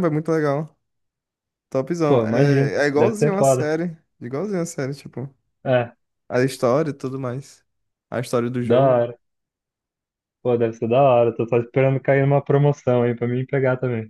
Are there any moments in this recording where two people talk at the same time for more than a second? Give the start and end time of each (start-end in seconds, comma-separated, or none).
2.1-3.7